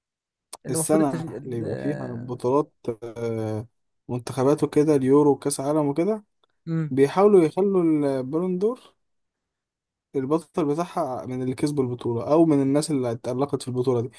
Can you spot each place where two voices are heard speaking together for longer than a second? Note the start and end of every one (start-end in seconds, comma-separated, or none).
0.7-2.4